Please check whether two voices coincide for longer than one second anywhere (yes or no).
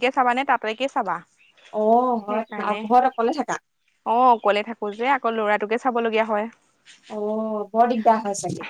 no